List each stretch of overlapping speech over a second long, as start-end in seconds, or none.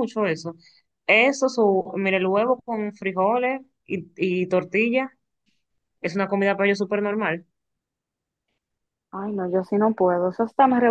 none